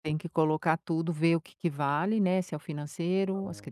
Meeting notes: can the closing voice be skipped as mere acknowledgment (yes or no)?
yes